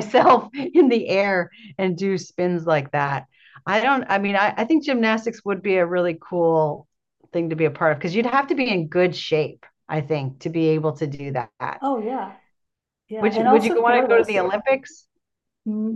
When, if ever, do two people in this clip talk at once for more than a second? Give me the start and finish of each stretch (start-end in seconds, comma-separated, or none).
13.2-14.4